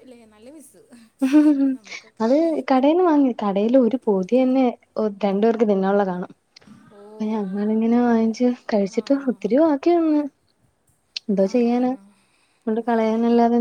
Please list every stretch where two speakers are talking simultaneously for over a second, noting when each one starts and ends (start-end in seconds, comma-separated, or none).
none